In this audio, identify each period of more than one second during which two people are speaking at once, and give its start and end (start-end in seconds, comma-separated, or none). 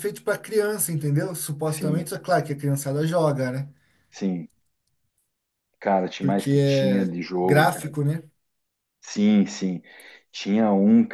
6.2-7.9